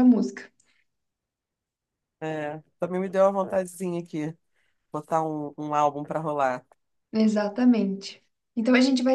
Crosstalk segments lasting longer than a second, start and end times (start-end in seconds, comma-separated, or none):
none